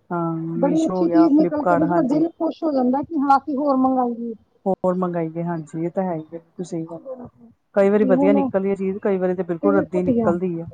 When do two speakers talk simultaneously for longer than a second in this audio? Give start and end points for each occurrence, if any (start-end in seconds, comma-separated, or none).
0.6-2.2